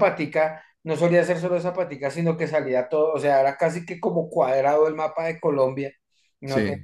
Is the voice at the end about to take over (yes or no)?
no